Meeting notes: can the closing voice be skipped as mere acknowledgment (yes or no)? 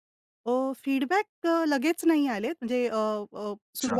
yes